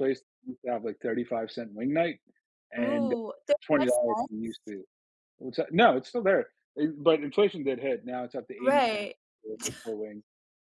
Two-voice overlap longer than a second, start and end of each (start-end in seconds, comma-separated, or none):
2.8-4.7